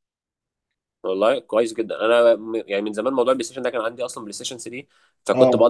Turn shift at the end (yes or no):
no